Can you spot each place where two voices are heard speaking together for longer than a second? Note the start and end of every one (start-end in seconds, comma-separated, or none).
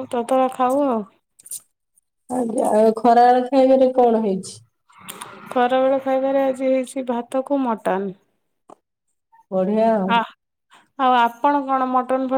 none